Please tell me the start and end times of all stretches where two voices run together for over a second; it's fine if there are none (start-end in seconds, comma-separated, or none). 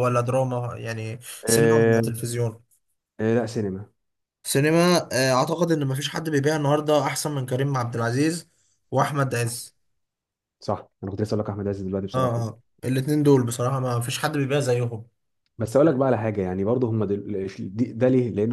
none